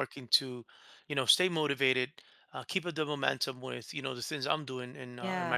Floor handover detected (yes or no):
no